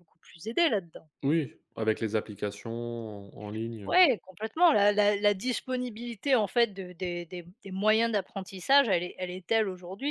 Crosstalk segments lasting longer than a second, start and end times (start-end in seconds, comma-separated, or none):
none